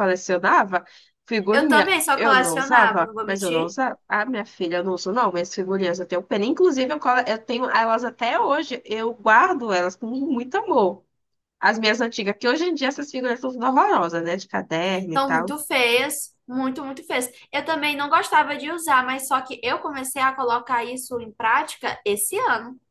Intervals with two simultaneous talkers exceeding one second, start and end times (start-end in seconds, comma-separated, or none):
1.5-3.7